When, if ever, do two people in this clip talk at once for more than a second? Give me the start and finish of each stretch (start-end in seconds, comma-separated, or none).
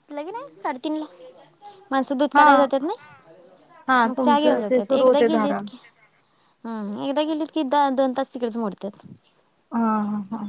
4.0-5.6